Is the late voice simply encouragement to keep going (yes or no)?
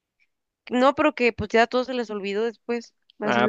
no